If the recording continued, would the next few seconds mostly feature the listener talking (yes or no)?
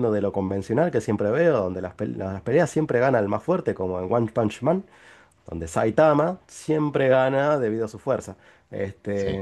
no